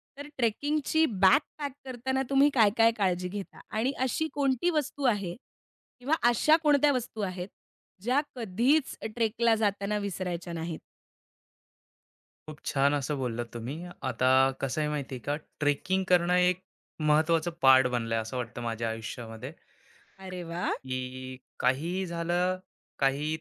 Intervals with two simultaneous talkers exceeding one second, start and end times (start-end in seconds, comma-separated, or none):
none